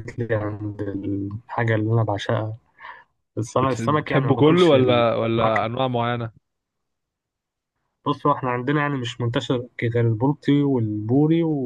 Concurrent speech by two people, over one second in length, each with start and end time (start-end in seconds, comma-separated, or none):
3.6-5.7